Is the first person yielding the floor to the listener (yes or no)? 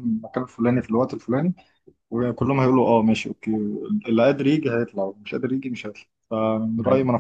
yes